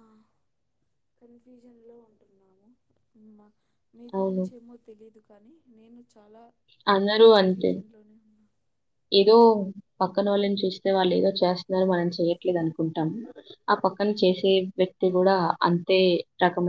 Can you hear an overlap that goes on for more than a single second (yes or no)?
no